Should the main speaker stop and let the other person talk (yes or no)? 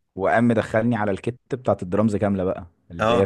no